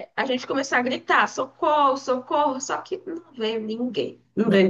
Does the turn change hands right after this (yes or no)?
no